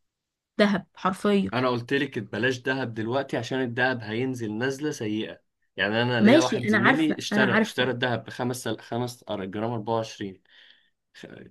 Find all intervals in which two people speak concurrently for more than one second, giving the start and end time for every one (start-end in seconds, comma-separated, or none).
6.2-7.9